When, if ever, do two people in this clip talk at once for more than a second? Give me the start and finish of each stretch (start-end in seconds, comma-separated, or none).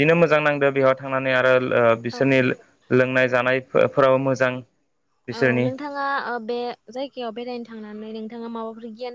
none